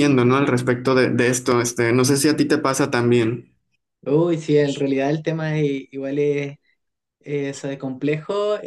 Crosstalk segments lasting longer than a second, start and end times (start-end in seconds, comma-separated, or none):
none